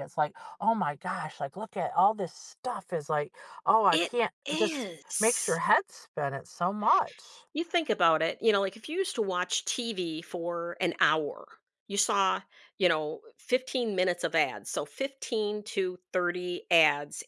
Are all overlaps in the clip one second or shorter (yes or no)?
no